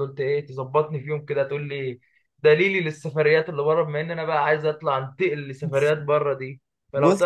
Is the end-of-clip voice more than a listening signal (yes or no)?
no